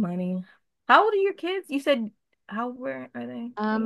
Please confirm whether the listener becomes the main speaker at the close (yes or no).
yes